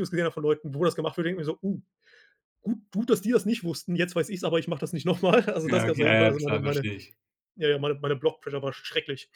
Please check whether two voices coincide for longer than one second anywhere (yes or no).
yes